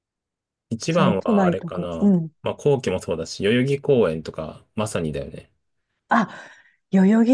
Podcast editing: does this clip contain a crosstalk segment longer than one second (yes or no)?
yes